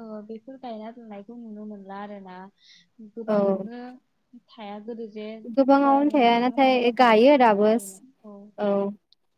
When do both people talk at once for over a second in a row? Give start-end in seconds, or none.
5.8-8.0